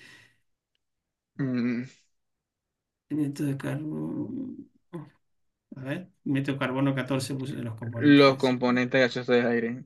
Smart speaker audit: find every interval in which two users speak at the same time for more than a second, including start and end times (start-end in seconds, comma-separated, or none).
none